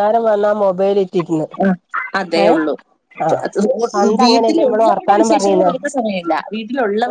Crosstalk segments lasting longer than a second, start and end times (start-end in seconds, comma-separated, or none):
4.2-5.7